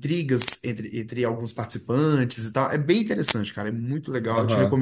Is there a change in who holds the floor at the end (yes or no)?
yes